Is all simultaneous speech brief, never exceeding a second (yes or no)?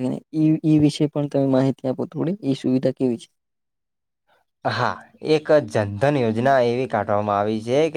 yes